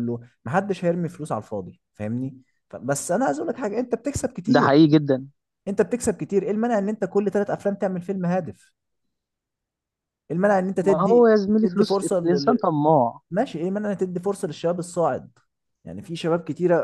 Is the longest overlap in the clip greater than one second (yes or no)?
yes